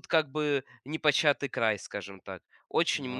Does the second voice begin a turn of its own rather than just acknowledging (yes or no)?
no